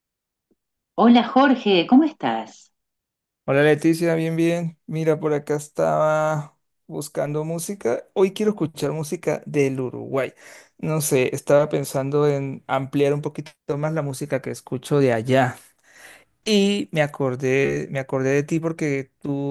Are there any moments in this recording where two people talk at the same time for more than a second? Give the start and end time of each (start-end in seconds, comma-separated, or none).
none